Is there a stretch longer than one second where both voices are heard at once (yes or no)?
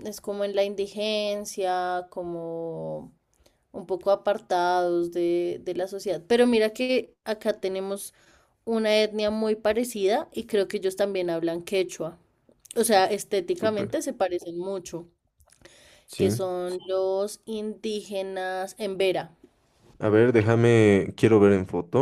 no